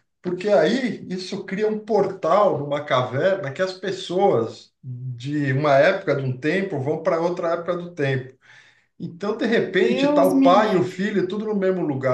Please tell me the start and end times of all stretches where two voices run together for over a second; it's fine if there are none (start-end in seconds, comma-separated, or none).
9.6-11.2